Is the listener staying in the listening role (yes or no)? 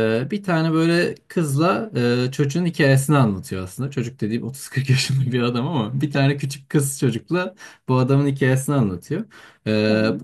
yes